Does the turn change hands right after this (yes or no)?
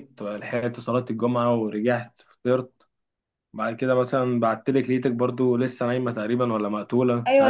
yes